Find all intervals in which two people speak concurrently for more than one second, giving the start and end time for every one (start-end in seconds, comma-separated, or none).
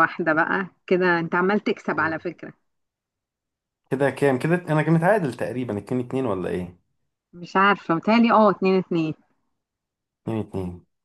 none